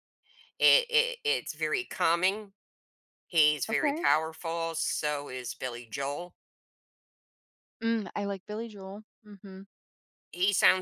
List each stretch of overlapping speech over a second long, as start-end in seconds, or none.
none